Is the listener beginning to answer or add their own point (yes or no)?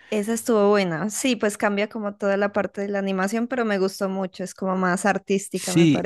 yes